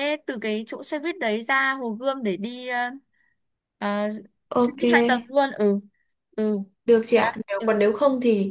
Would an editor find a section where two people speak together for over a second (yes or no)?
no